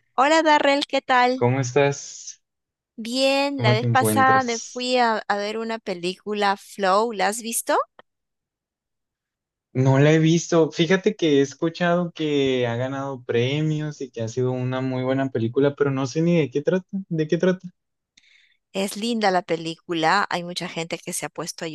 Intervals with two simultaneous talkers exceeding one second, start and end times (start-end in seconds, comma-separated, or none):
3.5-4.9